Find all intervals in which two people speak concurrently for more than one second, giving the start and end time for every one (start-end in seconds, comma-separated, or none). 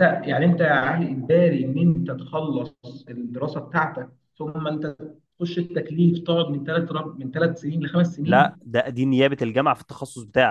none